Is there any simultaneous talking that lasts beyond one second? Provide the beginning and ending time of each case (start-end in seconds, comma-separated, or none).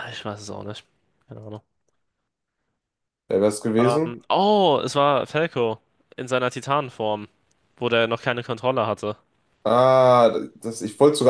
none